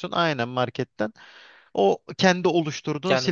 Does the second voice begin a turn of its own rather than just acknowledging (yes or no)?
yes